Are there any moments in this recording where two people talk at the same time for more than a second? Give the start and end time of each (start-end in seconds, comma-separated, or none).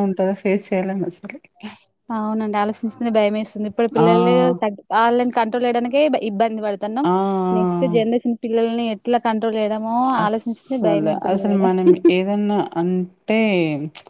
10.2-11.7